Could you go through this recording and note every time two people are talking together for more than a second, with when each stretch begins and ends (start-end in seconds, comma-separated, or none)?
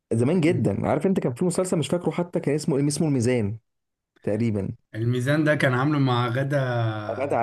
none